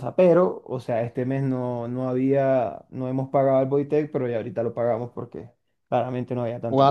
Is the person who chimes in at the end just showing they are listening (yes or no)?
no